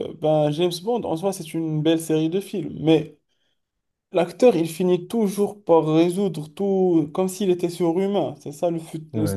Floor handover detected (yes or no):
yes